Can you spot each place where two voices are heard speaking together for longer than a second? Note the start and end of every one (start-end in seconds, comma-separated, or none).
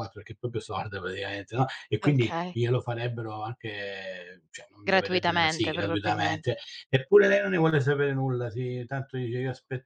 4.9-6.5